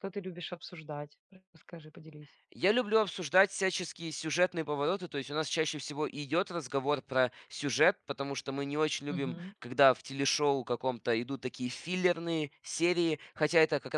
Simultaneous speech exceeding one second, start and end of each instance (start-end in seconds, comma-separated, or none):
none